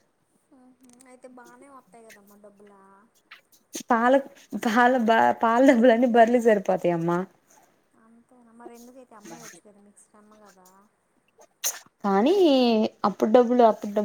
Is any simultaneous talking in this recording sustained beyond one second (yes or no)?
no